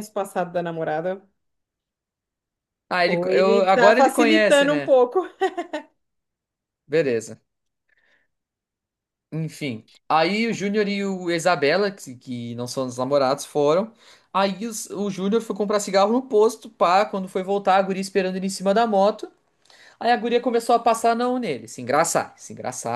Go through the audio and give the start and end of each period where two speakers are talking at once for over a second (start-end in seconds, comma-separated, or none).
3.0-5.0